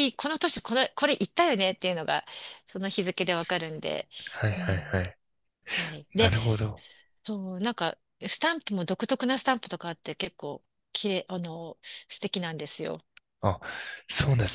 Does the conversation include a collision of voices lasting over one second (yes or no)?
no